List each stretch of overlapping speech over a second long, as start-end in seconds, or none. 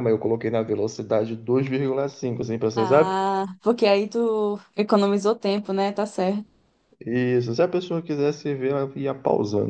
none